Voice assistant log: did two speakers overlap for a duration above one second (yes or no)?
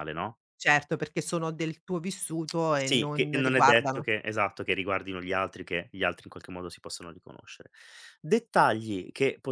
yes